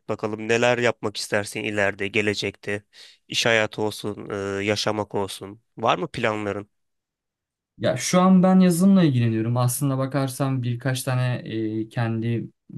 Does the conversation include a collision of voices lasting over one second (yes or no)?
no